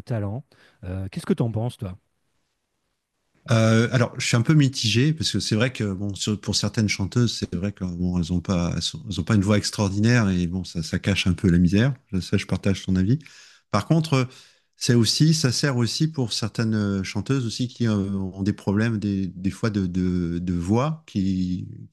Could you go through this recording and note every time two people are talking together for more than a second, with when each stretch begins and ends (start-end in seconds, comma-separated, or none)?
none